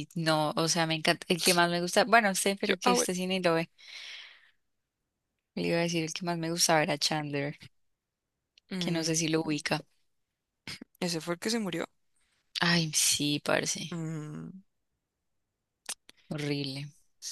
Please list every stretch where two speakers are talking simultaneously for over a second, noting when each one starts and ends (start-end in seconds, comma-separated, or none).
none